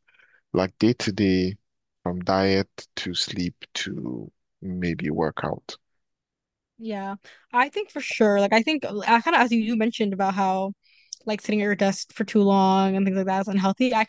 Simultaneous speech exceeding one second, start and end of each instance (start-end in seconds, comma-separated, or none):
none